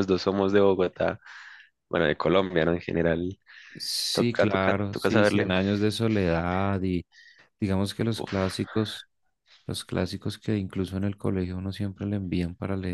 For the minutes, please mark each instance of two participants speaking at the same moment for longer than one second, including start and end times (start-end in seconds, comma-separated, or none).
4.1-5.5